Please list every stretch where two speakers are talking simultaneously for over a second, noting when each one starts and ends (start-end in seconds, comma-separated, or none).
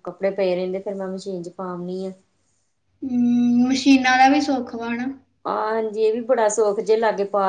none